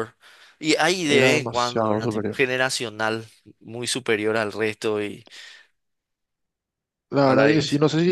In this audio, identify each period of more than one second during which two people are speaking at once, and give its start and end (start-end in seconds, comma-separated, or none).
1.0-2.4